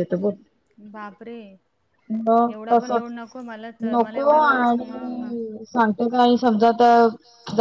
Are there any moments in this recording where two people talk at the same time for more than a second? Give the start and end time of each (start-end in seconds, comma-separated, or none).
3.9-5.3